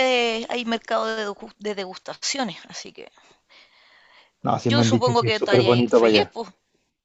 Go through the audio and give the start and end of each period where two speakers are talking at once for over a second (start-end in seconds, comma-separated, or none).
4.7-6.3